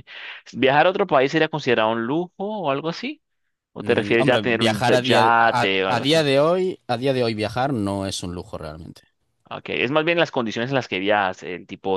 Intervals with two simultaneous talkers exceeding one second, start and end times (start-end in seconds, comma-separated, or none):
3.8-6.2